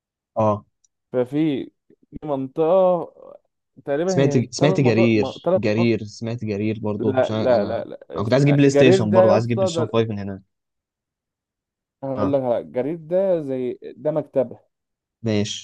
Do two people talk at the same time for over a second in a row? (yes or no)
yes